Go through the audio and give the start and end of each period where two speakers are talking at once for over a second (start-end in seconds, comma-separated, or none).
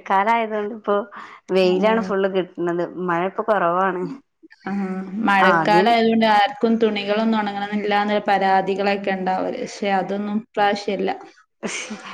none